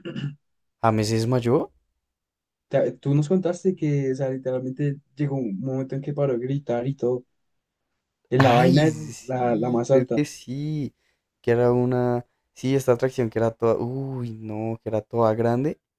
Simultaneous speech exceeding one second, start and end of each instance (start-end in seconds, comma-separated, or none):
8.4-10.2